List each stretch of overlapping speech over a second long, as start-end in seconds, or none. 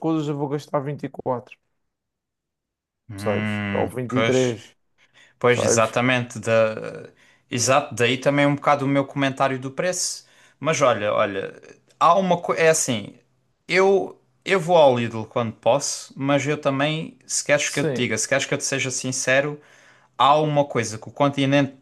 3.1-4.6